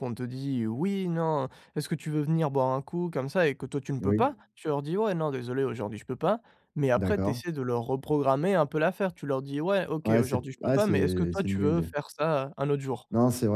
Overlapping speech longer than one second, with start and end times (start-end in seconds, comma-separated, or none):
10.0-11.9